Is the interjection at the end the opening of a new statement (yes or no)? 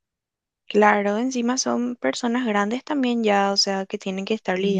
yes